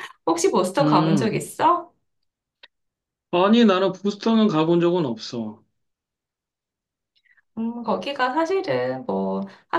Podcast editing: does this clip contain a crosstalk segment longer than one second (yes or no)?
no